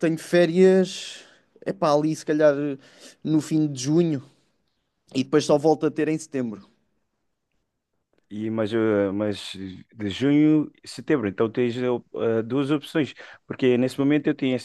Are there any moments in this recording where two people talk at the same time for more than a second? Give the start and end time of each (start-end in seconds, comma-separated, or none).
none